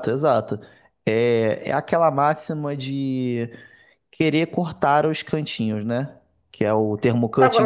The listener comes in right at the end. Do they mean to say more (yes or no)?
yes